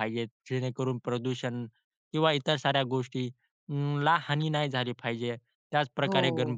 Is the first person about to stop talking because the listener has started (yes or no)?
no